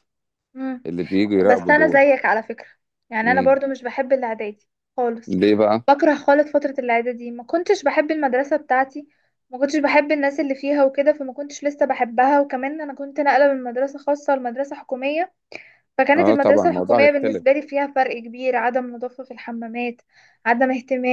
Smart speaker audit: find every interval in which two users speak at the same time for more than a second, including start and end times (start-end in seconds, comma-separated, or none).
16.2-17.4